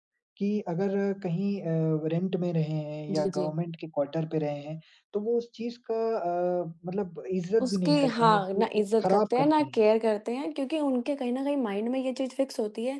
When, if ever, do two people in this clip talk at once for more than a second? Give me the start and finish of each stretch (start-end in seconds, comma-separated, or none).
7.6-9.8